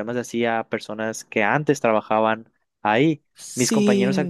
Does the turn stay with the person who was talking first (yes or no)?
yes